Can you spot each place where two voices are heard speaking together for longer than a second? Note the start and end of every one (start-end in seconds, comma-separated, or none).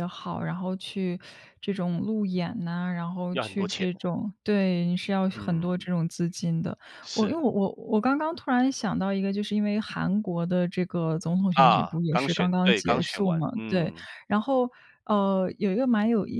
11.5-14.1